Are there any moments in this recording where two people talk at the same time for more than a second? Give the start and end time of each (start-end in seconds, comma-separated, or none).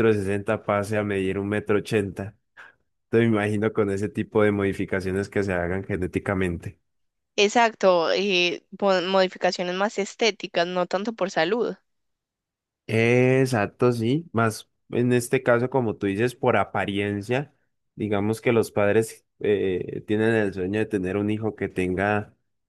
none